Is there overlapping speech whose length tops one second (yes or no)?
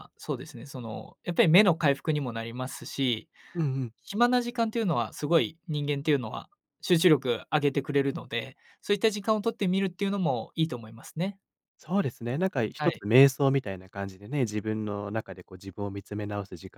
no